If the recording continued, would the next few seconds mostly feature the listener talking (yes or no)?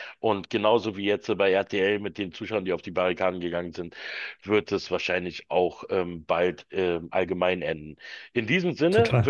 no